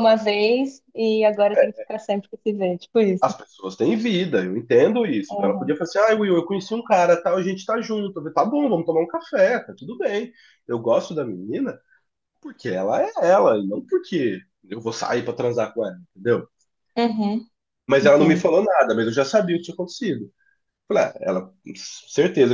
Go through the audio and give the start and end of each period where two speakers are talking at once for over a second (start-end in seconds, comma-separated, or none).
none